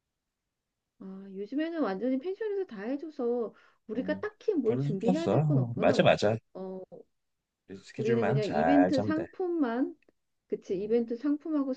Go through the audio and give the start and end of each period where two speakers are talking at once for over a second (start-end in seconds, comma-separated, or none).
4.0-6.0, 8.0-9.2